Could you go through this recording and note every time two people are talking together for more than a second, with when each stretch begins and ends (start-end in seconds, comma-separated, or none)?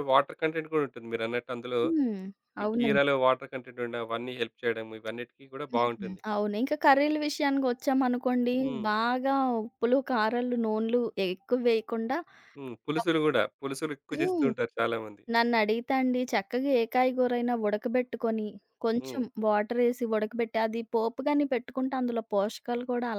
none